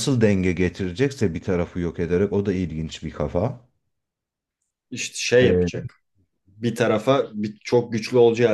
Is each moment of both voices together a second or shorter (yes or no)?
yes